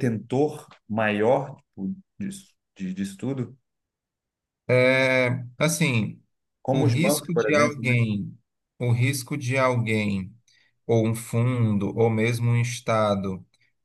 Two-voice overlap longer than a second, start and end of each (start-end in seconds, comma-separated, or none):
6.7-8.0